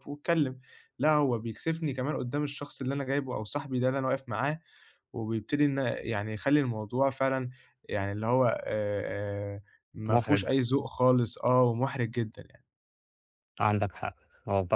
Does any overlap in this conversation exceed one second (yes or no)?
no